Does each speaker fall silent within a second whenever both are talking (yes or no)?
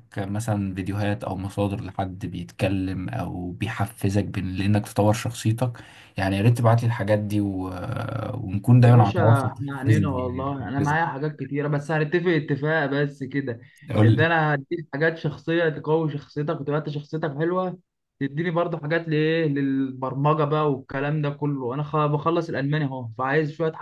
no